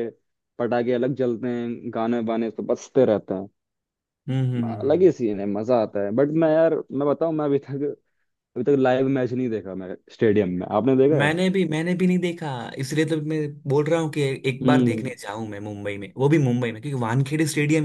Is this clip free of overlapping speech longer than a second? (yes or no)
yes